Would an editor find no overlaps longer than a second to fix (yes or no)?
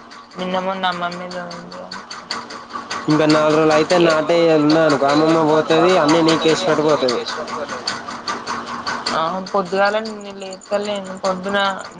yes